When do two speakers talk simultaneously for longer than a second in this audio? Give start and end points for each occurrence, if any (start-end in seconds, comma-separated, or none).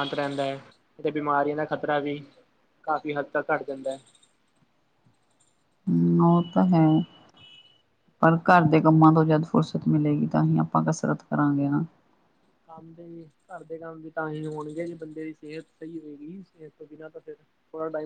none